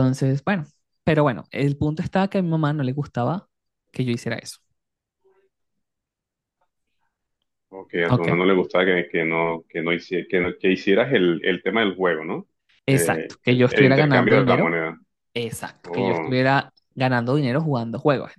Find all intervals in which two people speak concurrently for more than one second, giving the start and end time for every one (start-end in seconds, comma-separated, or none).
12.9-14.8